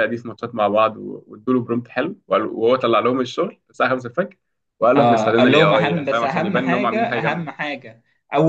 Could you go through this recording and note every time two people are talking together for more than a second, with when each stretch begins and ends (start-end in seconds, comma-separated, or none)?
5.0-7.5